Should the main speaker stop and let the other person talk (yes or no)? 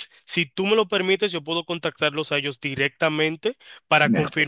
no